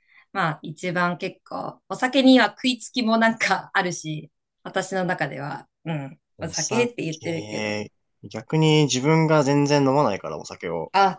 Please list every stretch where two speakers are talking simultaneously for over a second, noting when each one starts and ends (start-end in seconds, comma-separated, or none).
6.3-7.8